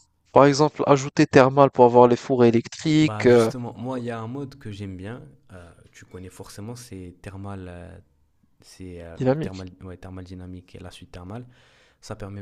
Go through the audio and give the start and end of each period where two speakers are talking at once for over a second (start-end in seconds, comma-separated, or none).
none